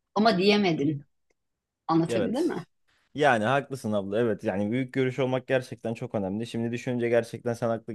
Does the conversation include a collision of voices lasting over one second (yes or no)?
no